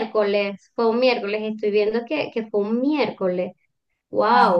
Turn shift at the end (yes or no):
yes